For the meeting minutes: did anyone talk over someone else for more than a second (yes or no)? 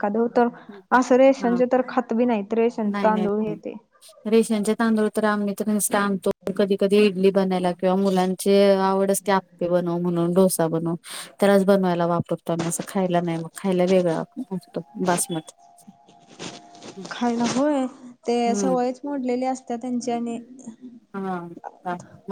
no